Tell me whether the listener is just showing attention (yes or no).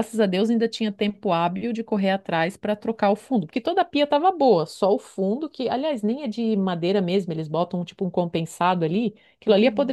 yes